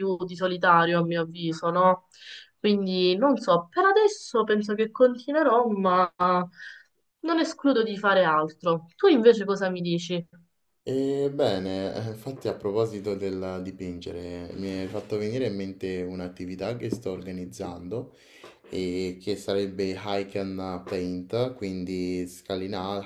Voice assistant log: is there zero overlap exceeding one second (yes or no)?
yes